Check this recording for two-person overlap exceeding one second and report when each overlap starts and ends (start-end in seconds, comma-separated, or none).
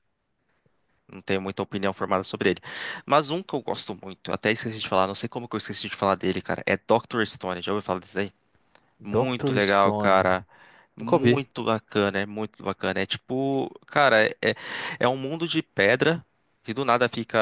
9.0-10.3